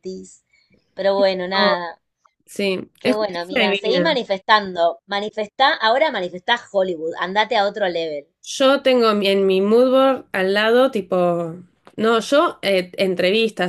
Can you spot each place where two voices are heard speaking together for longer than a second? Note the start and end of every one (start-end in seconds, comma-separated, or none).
3.0-4.2